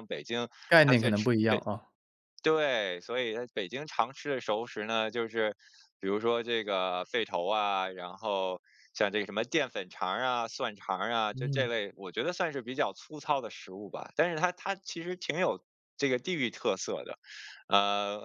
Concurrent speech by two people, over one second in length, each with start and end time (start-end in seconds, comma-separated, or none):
none